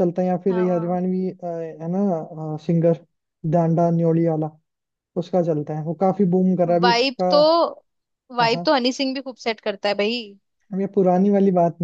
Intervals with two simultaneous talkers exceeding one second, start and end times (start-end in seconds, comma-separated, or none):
none